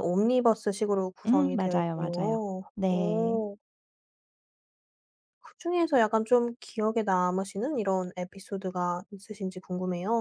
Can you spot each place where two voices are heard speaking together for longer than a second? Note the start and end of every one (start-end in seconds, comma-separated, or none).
1.3-3.4